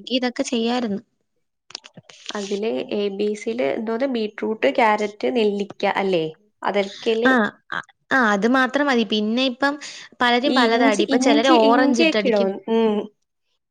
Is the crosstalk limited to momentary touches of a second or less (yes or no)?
no